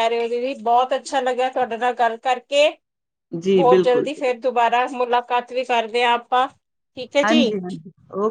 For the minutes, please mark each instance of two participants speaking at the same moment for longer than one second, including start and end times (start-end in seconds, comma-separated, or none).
none